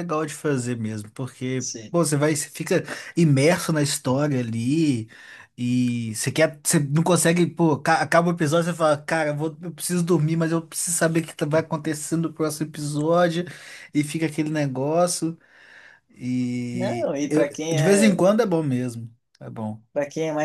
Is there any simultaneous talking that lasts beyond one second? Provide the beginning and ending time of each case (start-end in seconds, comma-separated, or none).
16.7-18.2